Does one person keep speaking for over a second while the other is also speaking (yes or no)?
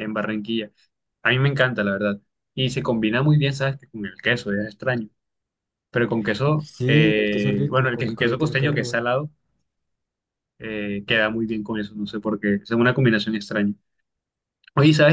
yes